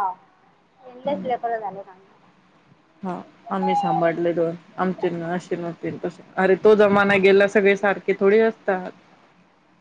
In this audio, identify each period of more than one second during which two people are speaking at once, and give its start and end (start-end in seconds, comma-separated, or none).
none